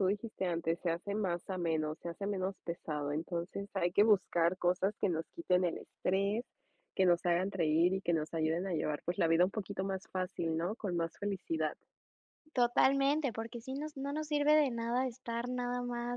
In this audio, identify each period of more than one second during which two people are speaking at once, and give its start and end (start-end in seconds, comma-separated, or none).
none